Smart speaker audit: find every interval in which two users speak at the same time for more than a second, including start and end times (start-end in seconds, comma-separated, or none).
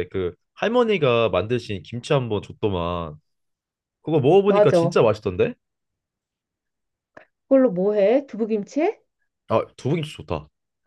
none